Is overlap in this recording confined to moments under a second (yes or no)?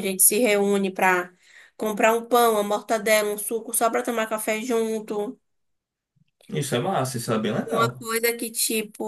yes